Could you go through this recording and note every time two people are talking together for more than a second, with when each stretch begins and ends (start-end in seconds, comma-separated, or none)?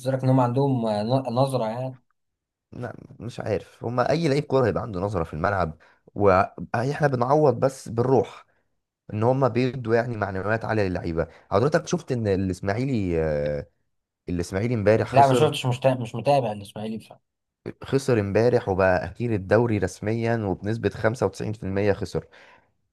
none